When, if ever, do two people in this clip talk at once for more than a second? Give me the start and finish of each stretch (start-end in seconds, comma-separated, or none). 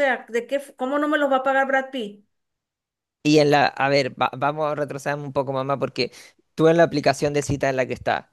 none